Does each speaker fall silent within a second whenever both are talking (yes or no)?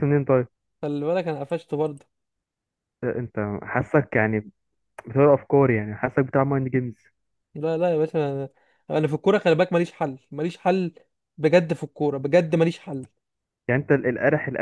yes